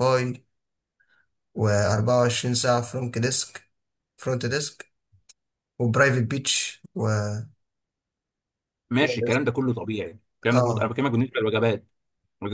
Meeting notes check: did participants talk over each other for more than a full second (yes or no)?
no